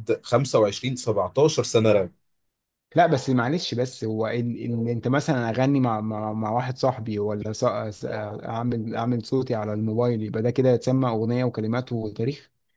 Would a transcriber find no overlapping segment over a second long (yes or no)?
yes